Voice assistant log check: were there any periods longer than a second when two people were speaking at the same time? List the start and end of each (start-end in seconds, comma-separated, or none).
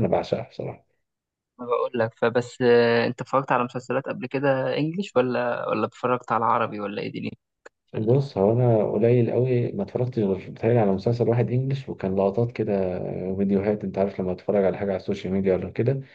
none